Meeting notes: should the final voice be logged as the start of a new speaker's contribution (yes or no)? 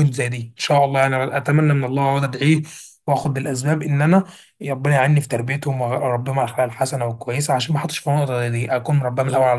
no